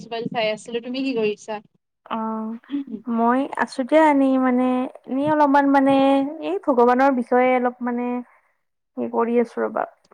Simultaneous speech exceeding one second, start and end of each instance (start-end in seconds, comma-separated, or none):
none